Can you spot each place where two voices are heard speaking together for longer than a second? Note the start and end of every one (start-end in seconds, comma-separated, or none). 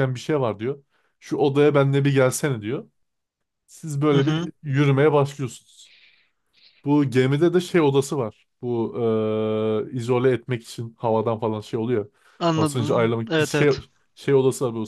12.6-13.8